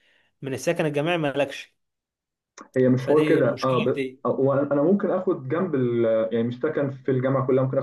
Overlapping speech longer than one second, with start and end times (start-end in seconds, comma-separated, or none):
3.0-4.2